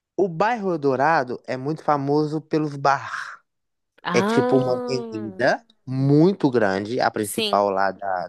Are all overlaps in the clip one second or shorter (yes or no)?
no